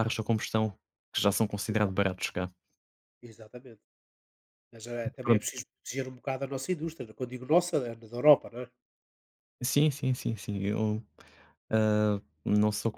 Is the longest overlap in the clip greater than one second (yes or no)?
no